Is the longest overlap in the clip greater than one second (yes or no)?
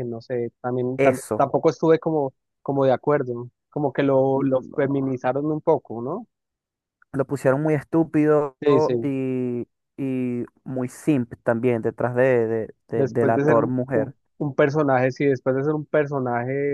yes